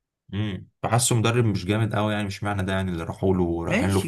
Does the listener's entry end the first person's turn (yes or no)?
yes